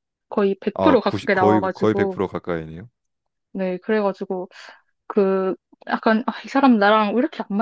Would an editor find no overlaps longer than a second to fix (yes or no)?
no